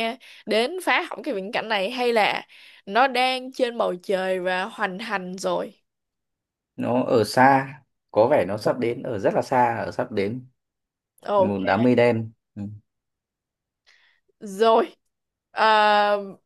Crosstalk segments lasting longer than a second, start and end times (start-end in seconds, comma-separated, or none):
none